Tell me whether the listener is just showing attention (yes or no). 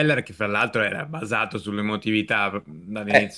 no